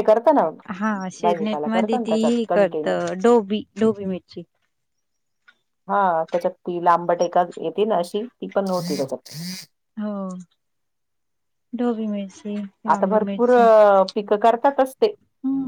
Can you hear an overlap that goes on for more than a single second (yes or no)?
yes